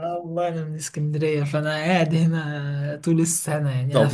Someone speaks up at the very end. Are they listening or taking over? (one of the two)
taking over